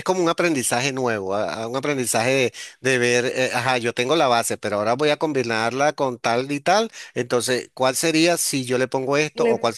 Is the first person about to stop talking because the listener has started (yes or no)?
no